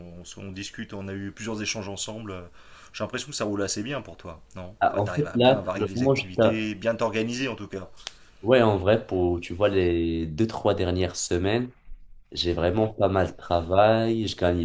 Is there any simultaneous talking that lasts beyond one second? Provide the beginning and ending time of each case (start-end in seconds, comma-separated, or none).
4.8-6.6